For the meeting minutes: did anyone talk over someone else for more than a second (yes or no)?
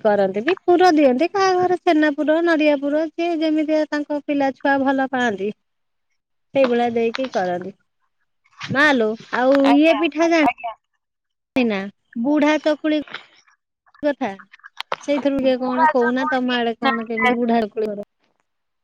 yes